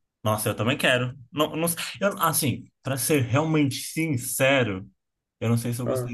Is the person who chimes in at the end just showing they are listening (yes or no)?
yes